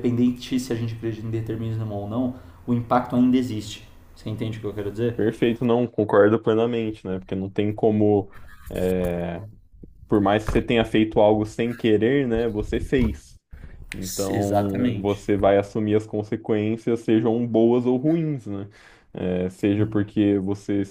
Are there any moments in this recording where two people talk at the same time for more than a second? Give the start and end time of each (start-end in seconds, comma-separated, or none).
14.0-15.2